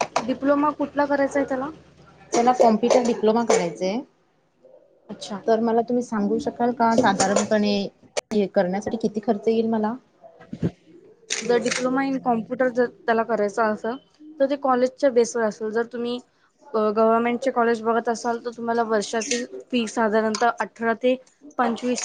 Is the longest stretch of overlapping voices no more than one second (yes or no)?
yes